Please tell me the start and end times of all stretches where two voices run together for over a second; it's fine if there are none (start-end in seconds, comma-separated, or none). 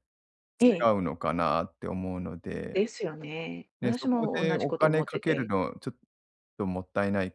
3.8-5.5